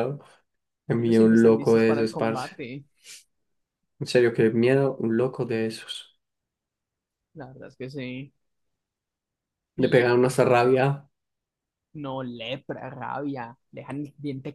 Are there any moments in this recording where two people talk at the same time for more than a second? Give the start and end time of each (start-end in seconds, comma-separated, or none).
1.0-2.6